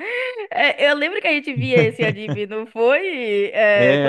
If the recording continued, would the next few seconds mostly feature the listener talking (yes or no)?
yes